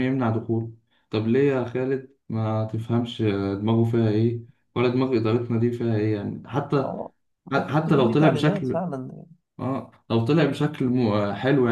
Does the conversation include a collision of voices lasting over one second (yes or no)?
yes